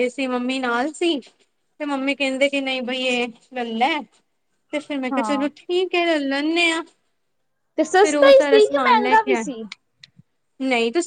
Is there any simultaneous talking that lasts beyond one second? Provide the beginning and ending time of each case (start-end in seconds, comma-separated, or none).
8.0-9.4